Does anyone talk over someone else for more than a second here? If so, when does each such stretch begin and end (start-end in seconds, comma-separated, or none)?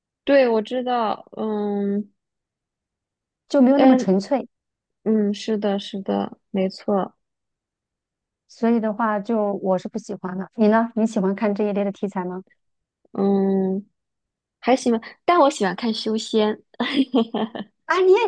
none